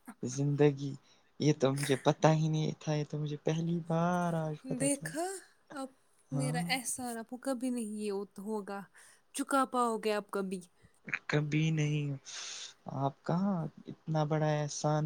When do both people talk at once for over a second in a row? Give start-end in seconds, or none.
none